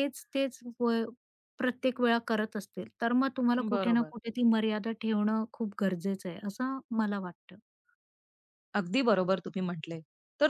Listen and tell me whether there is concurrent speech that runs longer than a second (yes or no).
no